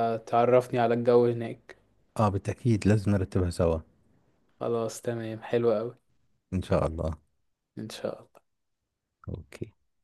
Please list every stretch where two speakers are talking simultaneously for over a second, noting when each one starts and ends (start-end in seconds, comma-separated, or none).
none